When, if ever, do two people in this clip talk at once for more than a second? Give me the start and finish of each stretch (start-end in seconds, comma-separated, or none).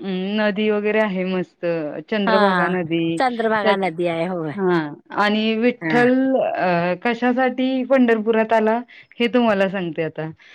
none